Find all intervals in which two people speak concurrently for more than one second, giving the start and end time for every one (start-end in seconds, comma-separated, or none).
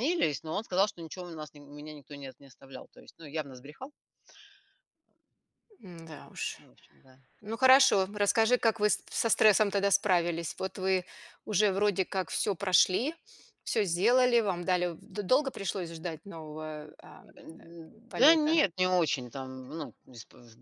none